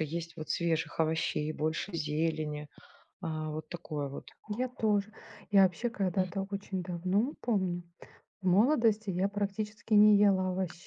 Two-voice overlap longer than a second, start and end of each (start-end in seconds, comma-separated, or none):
none